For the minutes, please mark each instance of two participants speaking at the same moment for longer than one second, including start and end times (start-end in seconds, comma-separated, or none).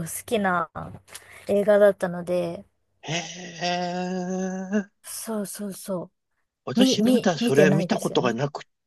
6.8-8.4